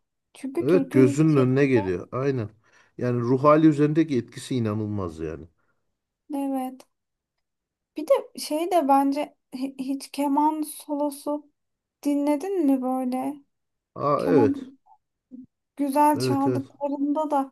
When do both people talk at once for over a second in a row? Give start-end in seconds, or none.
0.6-1.9